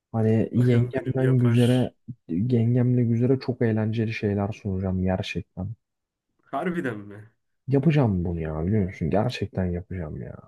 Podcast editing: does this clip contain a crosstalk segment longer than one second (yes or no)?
yes